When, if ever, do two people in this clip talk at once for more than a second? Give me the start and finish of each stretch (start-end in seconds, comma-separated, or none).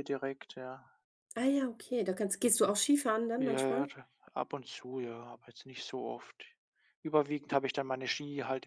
none